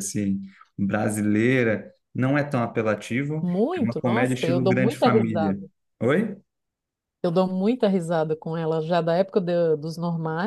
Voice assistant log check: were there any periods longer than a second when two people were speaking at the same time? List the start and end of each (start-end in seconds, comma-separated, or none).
3.4-5.6